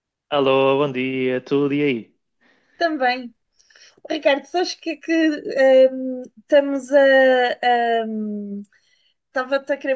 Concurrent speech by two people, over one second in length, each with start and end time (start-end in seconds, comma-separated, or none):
none